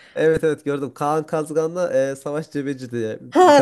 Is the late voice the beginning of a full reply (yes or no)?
yes